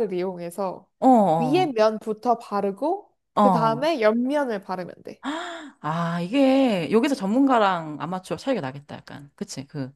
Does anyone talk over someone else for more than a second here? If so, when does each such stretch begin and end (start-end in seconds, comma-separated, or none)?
none